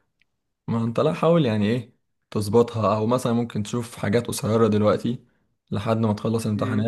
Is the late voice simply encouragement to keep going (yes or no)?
yes